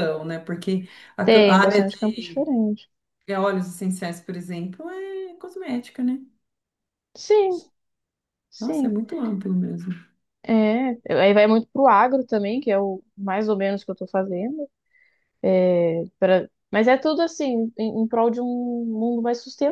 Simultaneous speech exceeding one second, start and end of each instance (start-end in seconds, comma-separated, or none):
1.2-2.5